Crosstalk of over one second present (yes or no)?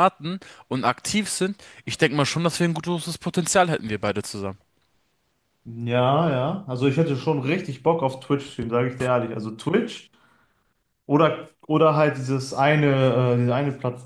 no